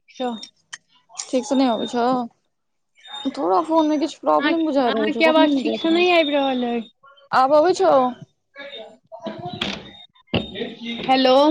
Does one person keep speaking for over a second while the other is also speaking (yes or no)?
yes